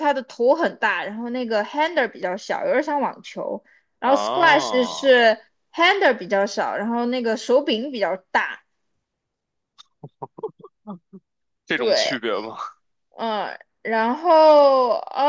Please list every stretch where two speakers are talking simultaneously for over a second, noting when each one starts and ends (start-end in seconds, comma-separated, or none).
4.0-5.2